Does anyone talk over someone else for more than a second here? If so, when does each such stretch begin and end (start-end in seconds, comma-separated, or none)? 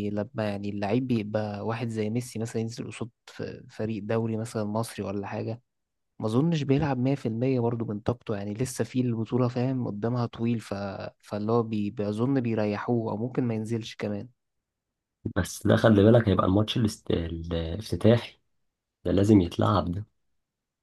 none